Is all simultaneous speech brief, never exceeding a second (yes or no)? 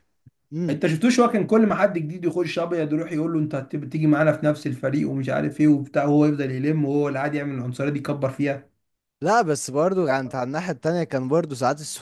yes